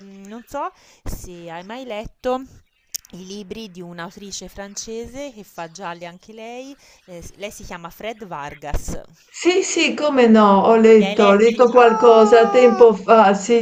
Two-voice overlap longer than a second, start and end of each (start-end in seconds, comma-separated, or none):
11.0-12.9